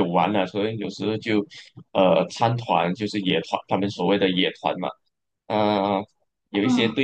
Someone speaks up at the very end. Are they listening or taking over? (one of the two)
listening